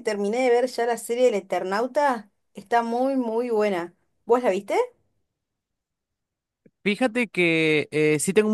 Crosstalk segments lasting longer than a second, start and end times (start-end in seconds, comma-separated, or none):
none